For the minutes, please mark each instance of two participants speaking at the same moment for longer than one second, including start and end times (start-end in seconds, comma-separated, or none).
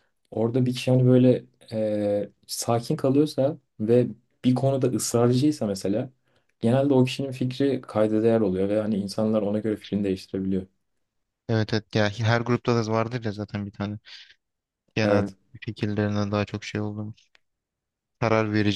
none